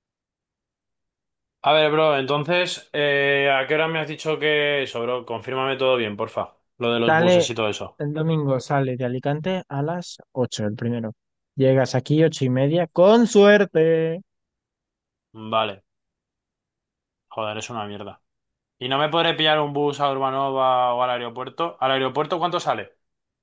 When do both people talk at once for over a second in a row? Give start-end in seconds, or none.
none